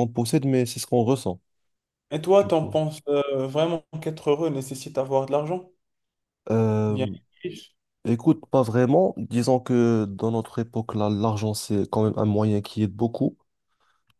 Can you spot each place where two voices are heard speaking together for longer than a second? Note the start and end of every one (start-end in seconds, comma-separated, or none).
none